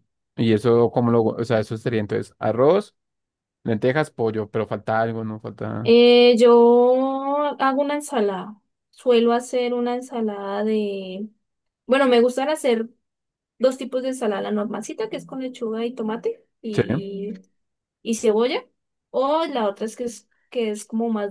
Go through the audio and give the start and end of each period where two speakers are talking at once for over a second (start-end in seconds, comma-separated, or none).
none